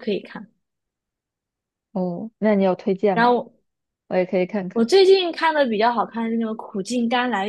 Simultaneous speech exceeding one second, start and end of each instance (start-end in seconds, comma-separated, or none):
none